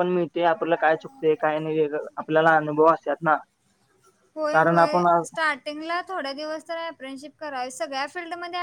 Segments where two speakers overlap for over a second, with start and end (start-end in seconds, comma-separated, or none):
none